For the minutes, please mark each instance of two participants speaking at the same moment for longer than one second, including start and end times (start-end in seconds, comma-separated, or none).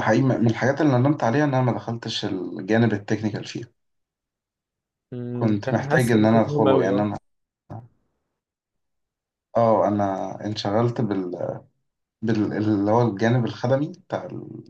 5.3-7.0